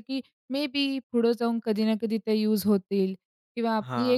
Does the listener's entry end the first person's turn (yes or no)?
no